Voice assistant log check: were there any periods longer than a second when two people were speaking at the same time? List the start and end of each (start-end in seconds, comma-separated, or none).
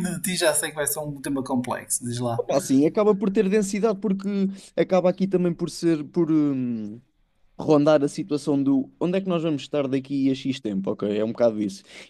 none